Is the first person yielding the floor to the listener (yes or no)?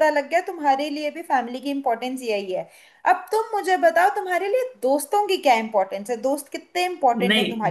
yes